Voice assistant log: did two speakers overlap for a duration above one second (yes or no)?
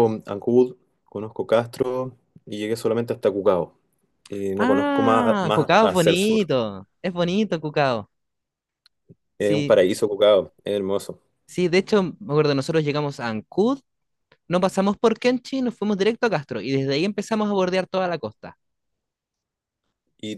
yes